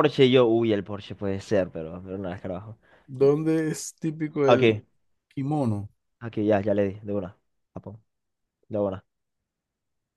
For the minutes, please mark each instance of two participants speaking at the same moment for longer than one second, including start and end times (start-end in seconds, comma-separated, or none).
none